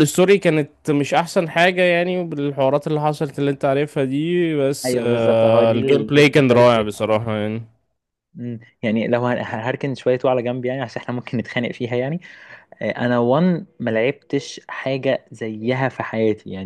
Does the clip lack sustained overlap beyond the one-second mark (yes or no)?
no